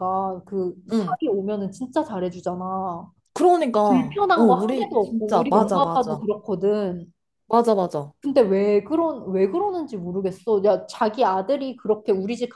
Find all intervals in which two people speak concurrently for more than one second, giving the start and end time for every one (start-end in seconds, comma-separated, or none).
3.9-6.2